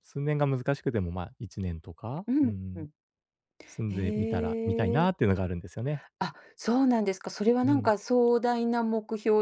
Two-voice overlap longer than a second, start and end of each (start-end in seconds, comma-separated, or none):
3.9-5.1